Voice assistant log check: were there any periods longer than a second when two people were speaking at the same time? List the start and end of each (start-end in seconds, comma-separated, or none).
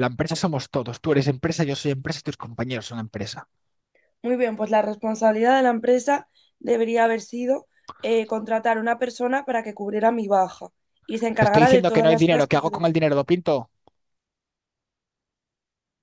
11.4-12.9